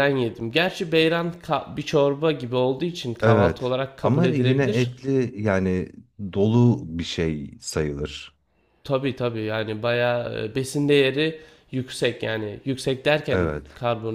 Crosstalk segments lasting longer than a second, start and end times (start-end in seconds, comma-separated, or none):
3.2-4.9